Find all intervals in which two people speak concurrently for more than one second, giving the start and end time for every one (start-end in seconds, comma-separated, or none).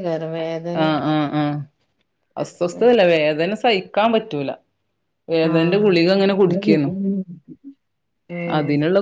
none